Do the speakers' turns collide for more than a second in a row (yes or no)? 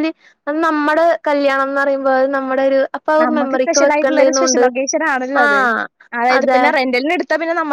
yes